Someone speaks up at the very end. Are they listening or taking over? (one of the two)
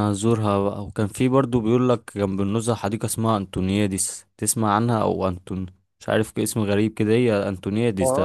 taking over